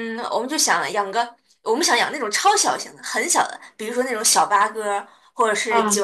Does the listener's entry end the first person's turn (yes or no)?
no